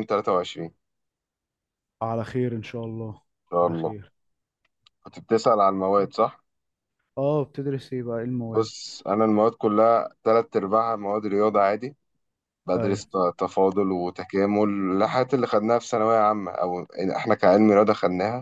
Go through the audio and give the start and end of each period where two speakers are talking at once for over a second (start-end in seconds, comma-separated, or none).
none